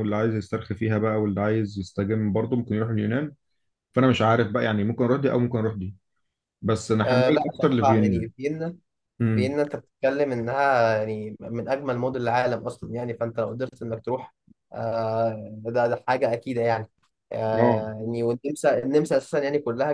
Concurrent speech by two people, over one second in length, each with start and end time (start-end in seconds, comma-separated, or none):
7.0-8.3